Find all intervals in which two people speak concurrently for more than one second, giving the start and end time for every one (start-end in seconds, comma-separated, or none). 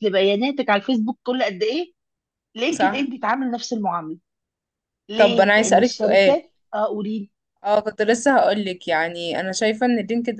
5.2-6.4